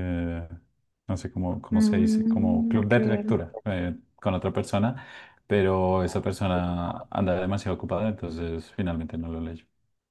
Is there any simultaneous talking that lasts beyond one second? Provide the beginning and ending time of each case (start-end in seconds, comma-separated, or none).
1.7-3.4